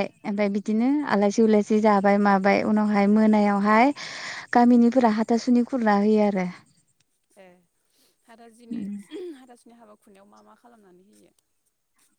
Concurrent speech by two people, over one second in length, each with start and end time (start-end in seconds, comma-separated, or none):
none